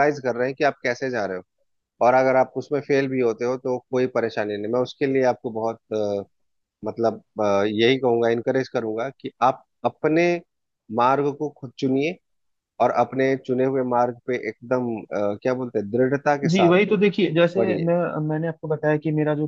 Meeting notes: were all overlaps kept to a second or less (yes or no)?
yes